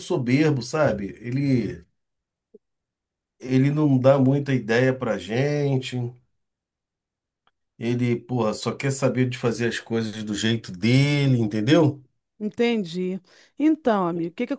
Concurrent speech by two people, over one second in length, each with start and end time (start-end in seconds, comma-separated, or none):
none